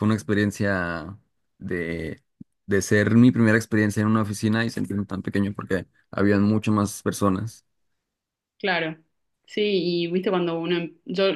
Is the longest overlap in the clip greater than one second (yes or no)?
no